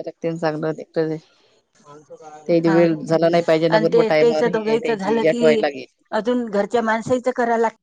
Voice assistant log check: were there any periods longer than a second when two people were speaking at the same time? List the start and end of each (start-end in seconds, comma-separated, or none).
3.8-5.6